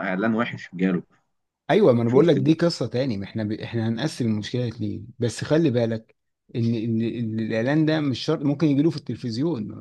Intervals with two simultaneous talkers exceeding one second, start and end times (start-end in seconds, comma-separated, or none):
none